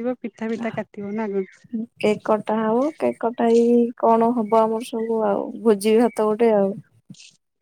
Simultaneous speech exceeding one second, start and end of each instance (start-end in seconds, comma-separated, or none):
none